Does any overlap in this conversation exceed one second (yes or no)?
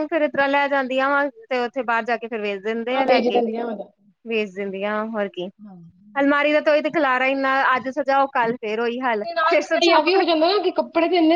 no